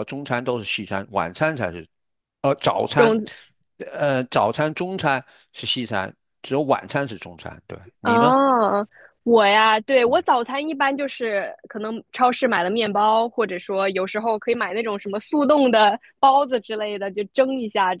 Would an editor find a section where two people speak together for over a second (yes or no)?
no